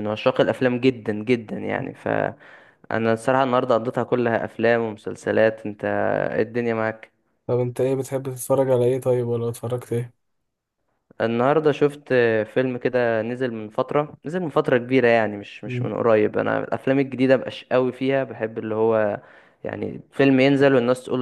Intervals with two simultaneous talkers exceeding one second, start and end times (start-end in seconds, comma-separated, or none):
none